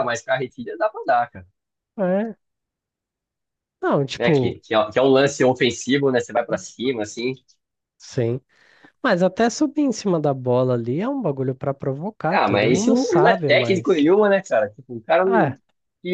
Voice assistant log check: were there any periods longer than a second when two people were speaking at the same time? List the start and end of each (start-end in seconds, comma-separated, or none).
12.3-14.1